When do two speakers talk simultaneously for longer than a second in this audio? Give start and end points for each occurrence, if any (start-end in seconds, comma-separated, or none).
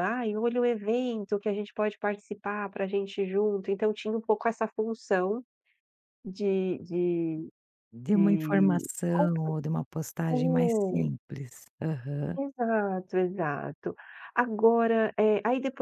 8.1-9.5